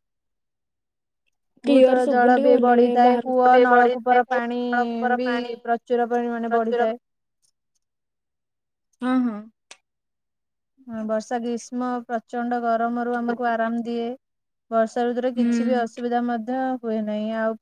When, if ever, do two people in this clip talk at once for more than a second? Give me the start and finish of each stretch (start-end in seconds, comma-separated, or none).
1.7-4.3